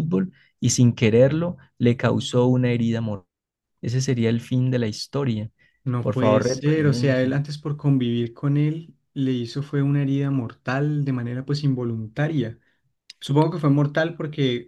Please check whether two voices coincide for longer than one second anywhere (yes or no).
yes